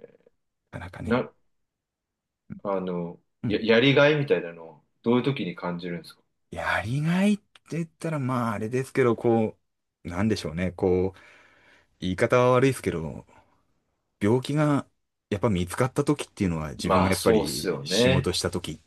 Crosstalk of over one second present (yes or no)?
yes